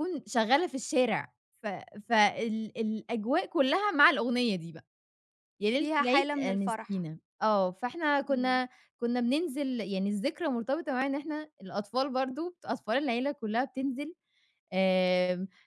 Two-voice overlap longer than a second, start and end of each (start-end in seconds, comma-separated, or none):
5.8-7.1